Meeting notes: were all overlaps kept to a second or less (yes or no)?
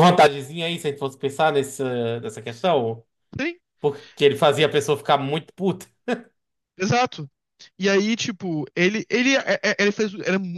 yes